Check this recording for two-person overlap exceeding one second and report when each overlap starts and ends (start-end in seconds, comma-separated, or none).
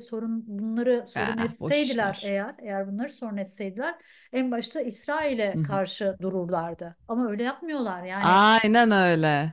1.1-2.4